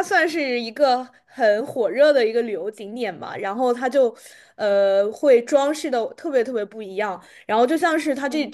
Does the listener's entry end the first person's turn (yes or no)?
no